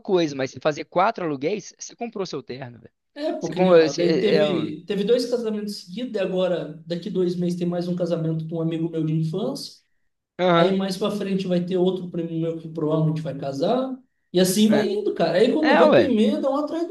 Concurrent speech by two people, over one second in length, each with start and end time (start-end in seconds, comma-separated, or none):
3.4-4.7